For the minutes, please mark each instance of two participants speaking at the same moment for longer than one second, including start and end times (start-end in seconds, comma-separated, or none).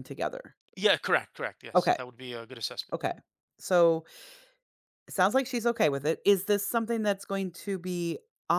none